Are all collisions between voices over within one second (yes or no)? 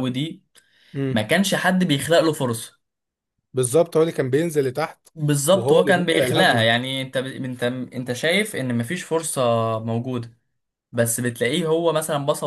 no